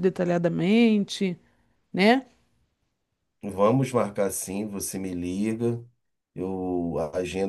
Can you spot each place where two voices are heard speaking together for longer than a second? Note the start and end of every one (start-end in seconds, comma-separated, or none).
none